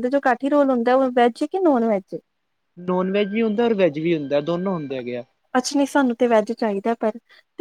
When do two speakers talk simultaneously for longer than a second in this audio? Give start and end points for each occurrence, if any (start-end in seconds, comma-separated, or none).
none